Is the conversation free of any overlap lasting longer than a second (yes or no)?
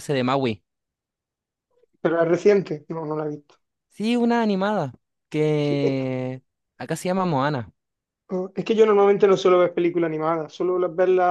yes